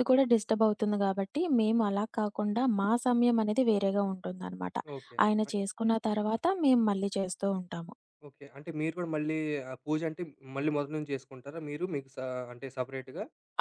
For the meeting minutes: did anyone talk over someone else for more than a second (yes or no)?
no